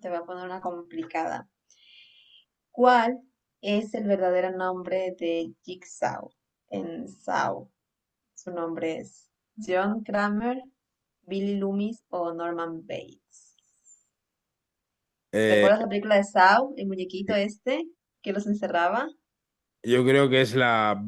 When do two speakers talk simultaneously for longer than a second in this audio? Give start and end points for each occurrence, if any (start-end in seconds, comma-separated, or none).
none